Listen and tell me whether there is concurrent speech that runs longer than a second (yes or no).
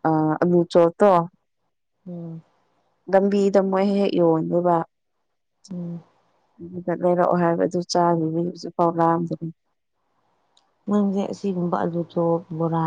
no